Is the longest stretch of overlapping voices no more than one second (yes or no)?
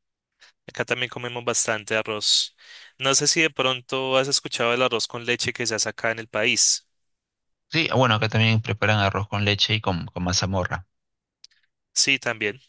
yes